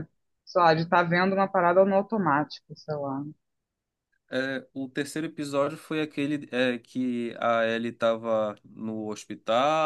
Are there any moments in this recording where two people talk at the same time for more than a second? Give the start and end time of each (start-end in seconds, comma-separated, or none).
none